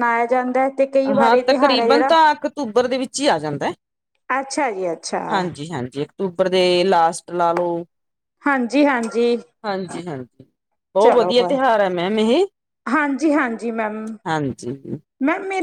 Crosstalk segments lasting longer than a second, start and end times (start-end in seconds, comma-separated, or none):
none